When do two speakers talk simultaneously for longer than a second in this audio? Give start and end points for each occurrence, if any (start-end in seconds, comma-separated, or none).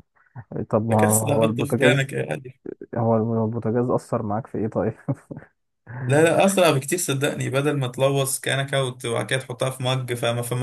0.9-2.1